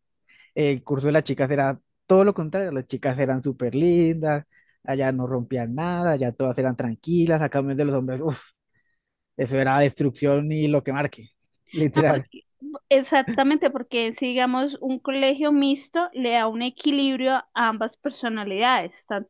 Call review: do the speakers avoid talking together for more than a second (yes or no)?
yes